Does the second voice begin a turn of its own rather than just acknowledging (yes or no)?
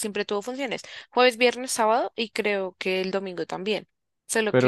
yes